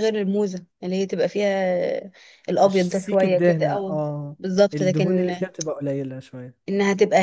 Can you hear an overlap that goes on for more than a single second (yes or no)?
yes